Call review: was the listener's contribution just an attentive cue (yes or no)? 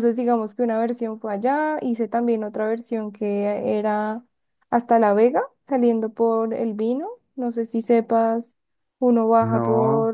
yes